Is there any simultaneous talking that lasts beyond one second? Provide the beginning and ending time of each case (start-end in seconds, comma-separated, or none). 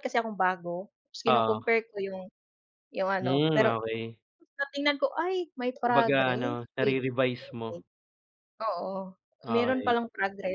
5.8-7.8